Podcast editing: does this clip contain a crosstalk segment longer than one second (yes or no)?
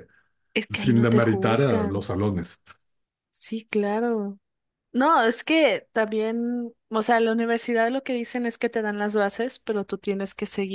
yes